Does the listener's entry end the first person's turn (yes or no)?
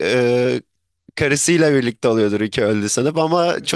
no